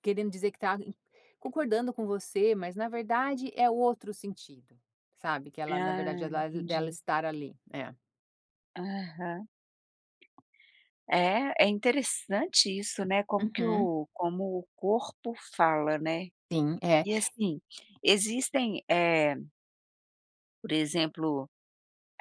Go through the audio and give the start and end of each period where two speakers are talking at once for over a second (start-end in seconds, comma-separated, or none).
5.7-7.0